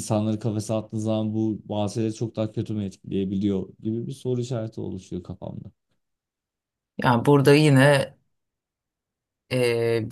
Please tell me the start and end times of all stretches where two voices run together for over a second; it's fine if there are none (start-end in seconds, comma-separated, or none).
none